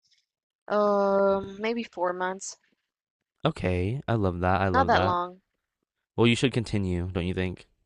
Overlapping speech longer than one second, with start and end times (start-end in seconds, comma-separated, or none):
none